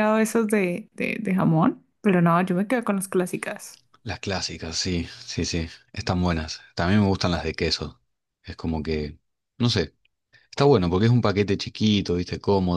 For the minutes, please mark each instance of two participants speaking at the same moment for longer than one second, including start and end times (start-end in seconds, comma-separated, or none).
none